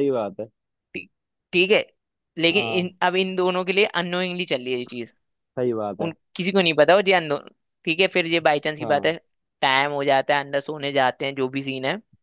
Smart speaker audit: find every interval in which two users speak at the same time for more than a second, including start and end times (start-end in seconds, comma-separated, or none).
none